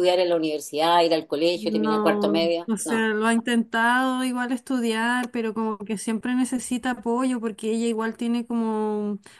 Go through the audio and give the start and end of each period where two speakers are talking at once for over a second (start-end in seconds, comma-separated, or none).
1.5-3.1